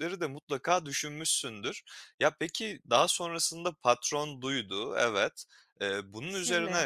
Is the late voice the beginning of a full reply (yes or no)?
no